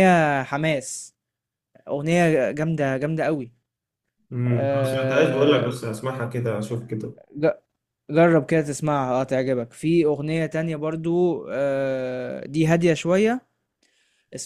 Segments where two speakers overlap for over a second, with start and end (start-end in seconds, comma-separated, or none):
4.5-5.7